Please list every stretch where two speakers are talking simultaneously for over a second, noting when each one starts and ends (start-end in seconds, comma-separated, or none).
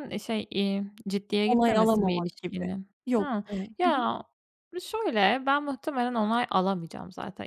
1.5-4.1